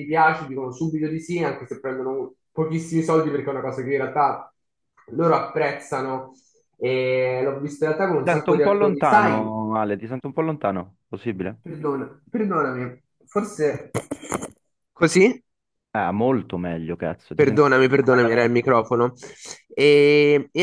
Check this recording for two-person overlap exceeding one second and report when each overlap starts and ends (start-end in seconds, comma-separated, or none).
8.1-9.6, 17.3-18.7